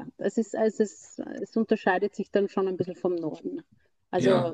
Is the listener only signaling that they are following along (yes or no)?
yes